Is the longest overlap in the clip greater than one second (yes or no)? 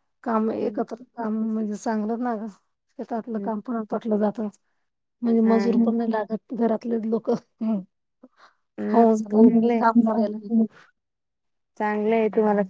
yes